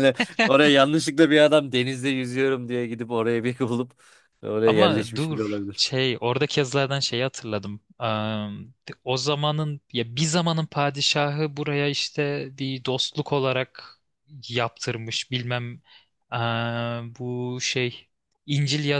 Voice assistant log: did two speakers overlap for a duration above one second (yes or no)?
yes